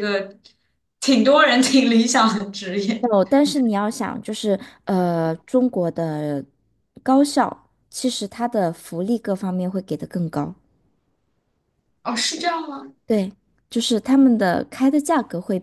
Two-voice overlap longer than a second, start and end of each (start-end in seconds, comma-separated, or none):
none